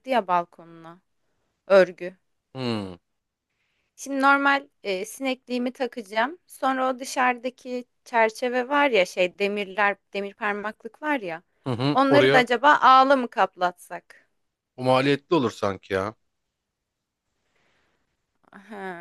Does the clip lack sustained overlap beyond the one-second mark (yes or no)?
yes